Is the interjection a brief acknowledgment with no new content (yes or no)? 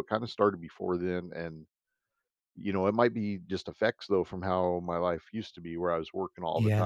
yes